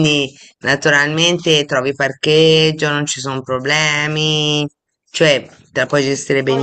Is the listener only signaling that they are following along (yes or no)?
no